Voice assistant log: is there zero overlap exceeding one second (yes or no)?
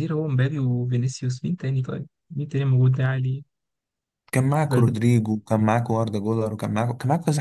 yes